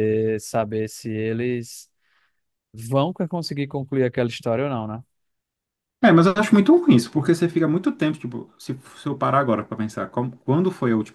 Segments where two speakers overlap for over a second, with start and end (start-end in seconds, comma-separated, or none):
none